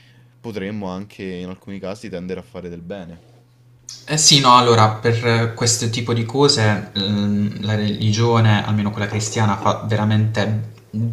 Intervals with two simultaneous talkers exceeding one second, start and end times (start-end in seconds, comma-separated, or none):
none